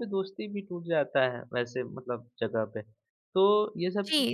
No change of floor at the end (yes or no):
no